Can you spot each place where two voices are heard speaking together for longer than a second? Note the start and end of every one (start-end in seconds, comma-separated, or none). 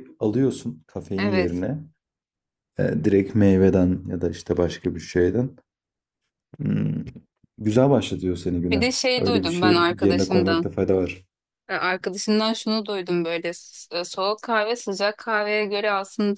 8.7-10.7